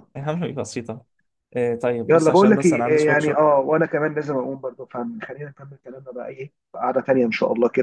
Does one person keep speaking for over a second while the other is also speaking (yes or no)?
yes